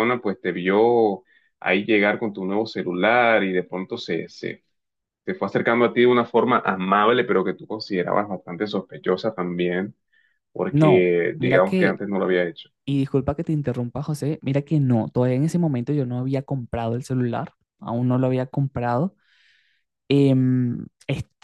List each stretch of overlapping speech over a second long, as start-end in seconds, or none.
10.7-12.0